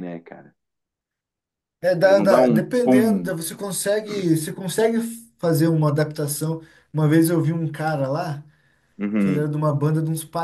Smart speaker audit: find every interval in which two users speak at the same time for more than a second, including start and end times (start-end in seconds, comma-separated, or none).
2.0-3.3